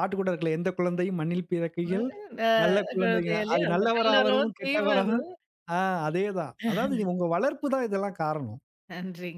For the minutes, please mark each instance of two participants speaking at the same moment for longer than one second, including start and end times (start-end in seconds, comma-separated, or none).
3.0-5.2